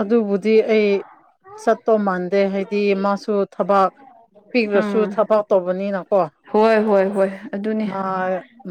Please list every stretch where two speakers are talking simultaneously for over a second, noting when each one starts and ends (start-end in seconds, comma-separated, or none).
none